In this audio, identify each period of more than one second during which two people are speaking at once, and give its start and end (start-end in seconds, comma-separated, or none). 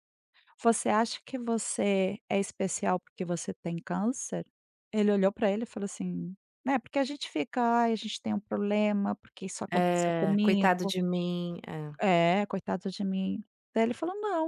9.7-10.9